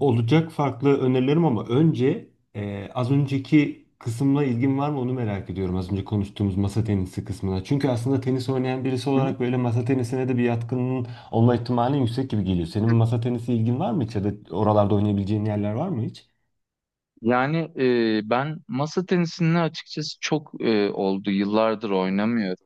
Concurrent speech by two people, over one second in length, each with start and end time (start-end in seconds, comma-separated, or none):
none